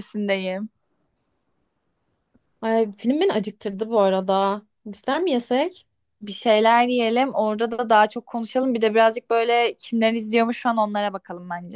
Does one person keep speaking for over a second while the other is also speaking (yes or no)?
no